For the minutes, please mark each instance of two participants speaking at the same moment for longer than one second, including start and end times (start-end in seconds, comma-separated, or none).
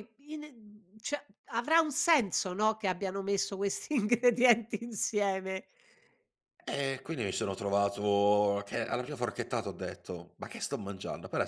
none